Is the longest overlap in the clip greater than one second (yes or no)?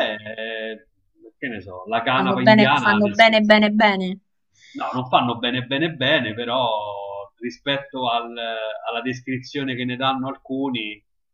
yes